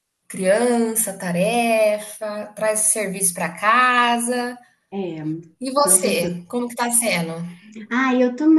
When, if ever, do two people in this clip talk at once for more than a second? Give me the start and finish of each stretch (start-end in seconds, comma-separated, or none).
none